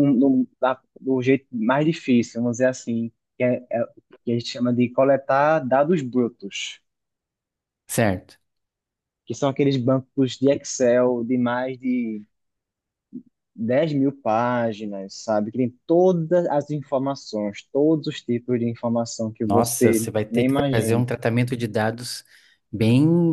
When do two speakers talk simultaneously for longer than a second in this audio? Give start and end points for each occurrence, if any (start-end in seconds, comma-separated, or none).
19.4-21.1